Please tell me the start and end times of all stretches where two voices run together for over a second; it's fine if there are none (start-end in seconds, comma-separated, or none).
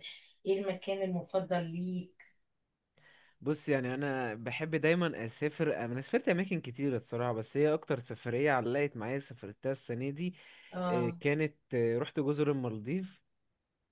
none